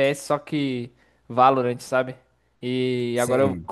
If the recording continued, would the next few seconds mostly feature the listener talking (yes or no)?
no